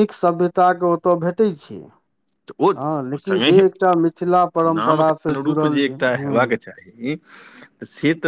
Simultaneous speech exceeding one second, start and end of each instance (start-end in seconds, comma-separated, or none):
4.8-6.5